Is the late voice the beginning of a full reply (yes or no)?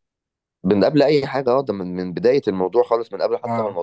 no